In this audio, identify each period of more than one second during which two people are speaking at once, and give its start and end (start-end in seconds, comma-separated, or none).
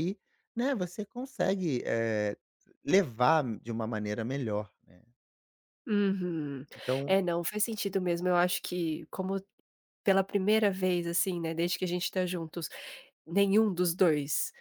none